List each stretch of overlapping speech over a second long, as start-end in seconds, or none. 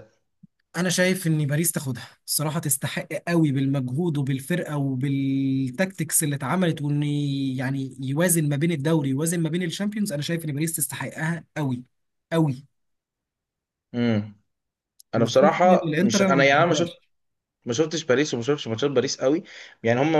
15.2-16.9